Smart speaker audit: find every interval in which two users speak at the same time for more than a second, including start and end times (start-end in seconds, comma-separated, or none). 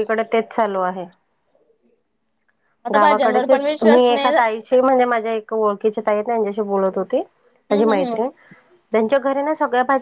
2.9-4.3